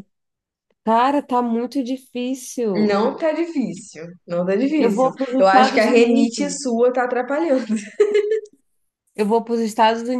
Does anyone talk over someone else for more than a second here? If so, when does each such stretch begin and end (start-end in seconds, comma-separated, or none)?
4.8-6.6